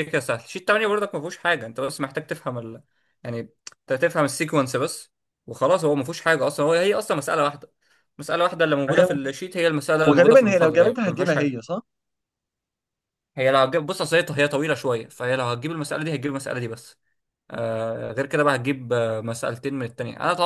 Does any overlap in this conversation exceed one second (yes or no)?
yes